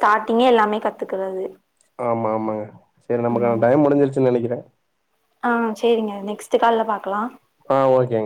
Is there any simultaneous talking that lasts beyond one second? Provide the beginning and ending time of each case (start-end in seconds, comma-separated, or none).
none